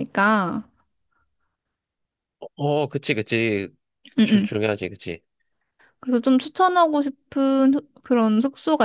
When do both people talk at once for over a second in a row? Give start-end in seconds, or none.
none